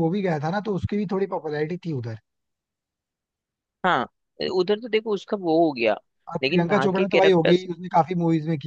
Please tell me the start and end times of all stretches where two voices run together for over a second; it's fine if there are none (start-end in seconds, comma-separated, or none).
6.4-7.7